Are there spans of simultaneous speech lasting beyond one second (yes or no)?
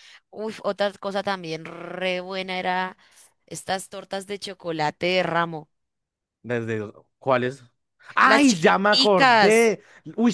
yes